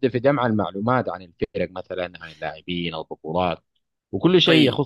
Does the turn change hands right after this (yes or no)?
no